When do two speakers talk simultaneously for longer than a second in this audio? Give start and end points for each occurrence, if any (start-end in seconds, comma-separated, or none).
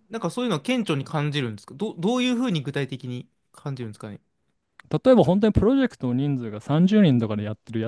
none